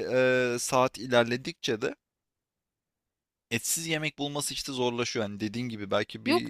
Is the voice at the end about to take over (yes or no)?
yes